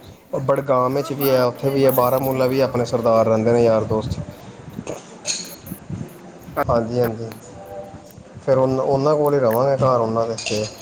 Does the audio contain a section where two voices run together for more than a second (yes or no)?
yes